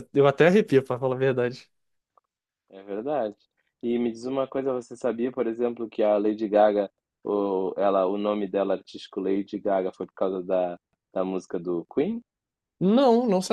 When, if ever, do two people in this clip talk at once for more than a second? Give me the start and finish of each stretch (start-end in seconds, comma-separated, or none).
none